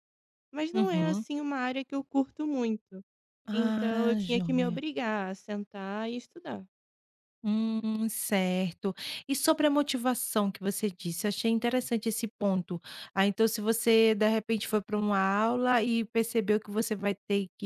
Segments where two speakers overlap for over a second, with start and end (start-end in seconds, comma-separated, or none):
3.5-4.8